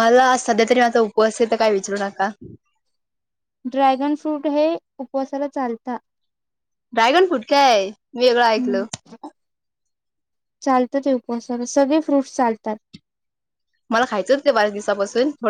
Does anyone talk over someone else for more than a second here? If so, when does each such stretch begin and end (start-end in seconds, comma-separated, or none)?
none